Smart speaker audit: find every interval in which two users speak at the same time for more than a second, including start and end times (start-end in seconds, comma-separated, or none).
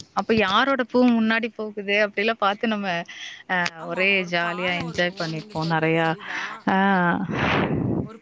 3.8-6.4